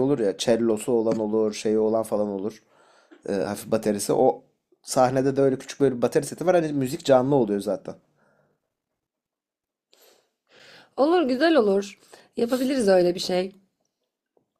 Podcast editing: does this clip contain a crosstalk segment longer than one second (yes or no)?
no